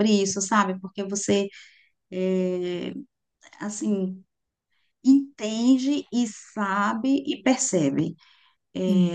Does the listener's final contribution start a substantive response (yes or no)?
yes